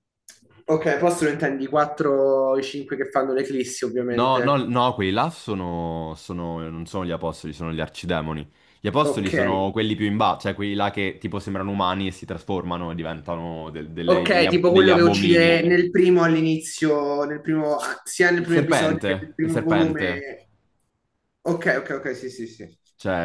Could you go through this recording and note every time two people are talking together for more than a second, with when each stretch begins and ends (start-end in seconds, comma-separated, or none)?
14.1-15.7, 18.4-20.2